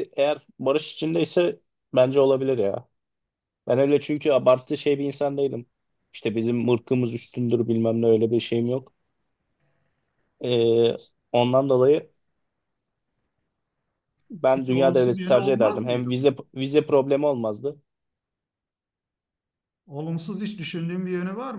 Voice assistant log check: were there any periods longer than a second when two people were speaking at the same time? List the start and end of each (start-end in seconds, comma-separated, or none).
14.5-16.4